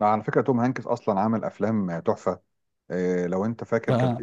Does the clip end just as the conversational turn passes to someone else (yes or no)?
no